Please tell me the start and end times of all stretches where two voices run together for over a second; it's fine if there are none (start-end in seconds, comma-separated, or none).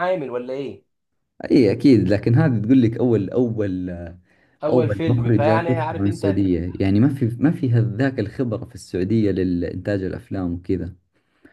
4.7-6.4